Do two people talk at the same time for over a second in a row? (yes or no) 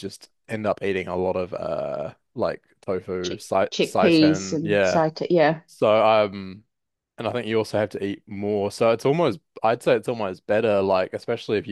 yes